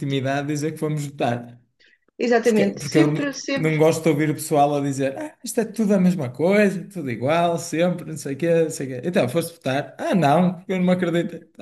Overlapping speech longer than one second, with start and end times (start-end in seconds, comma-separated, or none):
2.4-3.8